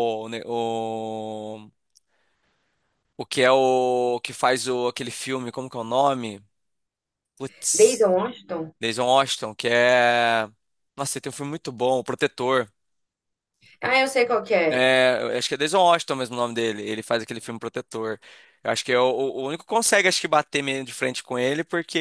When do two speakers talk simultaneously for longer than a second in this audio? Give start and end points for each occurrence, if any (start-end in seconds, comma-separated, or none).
none